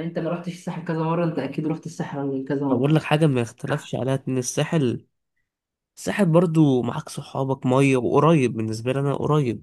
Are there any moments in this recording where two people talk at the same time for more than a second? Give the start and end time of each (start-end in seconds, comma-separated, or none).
none